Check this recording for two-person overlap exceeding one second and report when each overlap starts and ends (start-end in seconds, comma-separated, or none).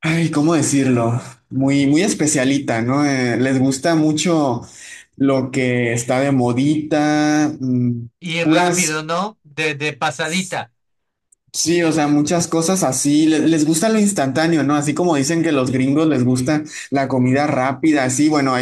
none